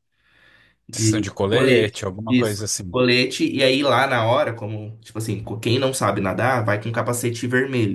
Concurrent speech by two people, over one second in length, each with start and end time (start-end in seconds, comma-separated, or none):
0.9-3.0